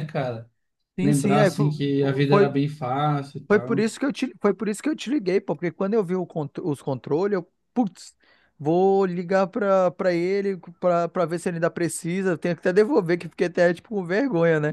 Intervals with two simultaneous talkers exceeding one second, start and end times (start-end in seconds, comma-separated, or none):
1.0-2.5